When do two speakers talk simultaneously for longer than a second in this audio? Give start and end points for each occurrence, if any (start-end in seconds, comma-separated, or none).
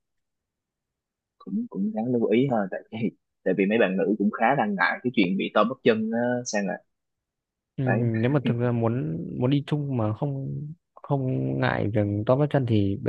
none